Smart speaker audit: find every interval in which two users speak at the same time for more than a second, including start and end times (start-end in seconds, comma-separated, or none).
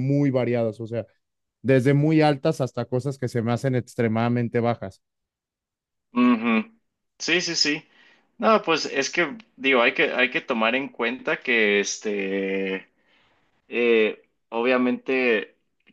none